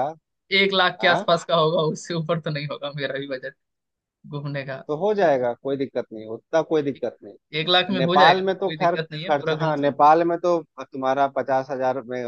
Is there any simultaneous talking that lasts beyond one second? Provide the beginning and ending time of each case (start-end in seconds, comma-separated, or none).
8.0-10.0